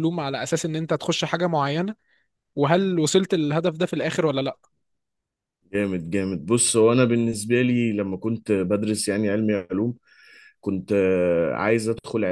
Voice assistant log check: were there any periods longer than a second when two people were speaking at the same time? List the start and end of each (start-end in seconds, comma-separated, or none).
none